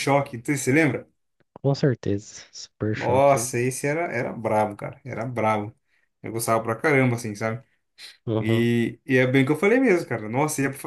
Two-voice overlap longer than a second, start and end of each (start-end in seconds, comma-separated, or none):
none